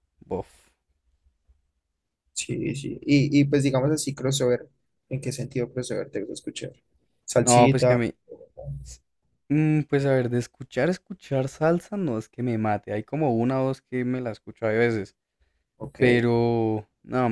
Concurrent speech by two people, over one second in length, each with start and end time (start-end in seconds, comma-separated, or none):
none